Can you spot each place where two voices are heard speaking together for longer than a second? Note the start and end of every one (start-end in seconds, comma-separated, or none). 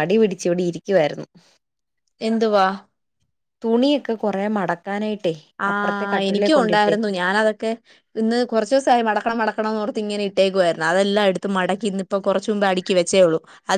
5.7-7.1